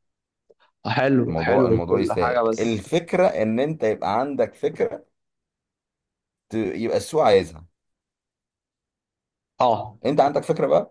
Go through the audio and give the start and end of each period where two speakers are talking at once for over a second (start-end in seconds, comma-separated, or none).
1.3-2.9